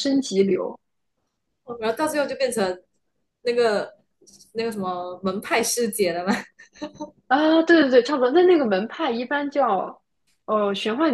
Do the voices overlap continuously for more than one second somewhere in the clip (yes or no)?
no